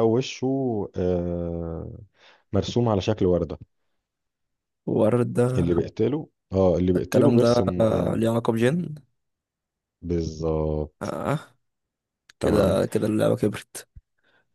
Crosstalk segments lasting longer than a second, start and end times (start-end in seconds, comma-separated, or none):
6.9-8.3